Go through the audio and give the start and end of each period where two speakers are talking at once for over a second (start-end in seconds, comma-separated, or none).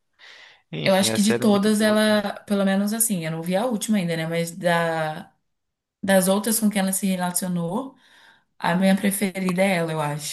0.8-2.2